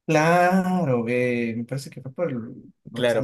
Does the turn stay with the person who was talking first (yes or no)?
no